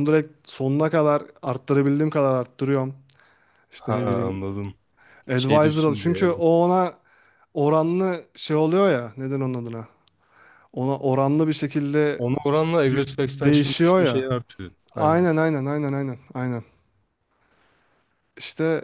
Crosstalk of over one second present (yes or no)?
yes